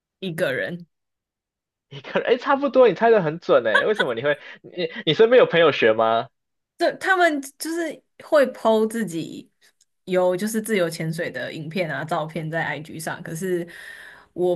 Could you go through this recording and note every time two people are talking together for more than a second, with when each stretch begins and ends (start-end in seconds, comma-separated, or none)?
none